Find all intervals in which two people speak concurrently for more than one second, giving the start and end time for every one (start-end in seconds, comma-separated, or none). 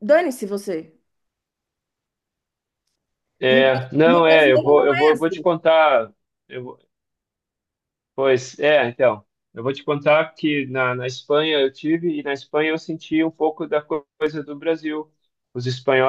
3.5-5.4